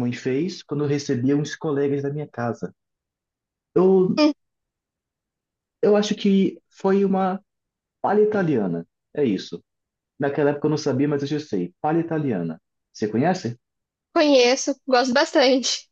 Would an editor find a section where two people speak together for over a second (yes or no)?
no